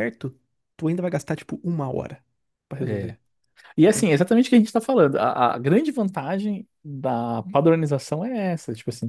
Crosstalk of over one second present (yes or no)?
no